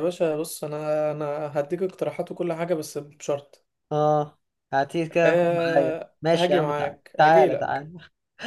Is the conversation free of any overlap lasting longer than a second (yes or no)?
no